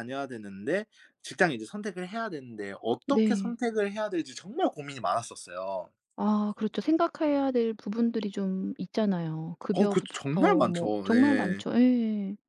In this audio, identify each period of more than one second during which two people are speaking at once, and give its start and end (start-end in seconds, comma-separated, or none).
9.7-11.6